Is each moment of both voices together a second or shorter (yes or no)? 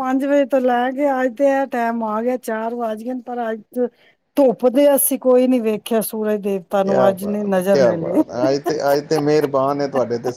yes